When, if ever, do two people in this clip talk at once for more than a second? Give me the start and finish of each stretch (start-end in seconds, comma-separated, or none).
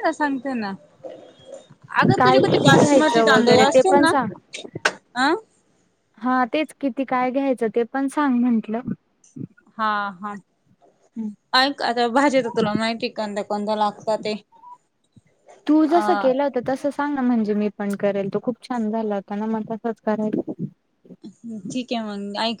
2.2-4.1